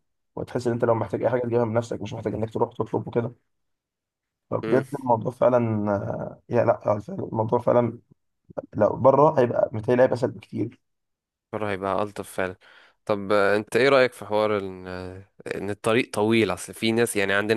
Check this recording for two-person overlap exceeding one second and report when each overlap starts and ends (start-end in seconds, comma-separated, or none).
none